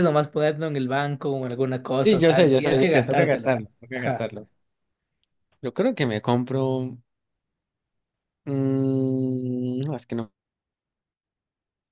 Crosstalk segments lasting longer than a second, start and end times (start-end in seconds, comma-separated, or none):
2.0-4.3